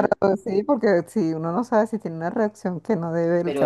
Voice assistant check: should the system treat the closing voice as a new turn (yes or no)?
yes